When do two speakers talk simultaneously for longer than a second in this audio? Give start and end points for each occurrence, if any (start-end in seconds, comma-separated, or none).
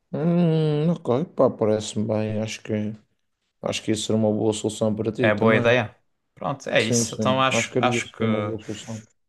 6.8-8.2